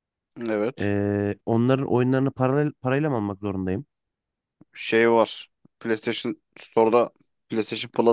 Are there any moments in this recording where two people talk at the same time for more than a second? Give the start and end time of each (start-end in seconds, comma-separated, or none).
none